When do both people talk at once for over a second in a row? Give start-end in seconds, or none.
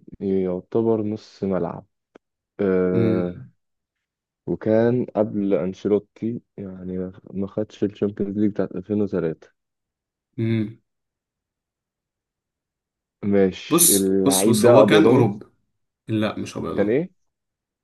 13.7-15.3